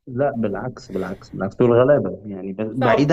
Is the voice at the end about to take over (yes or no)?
yes